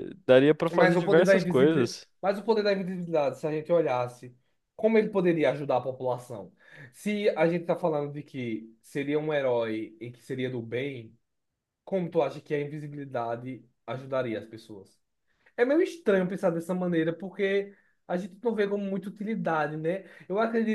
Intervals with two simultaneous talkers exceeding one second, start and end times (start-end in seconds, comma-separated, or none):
0.7-2.1